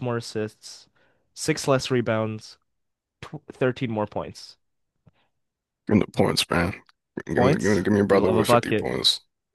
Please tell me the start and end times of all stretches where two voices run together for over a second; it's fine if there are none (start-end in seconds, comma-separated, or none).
7.3-8.9